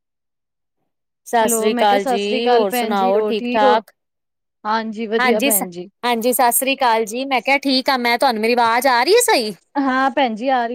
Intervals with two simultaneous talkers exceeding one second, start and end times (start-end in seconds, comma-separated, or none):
1.4-3.8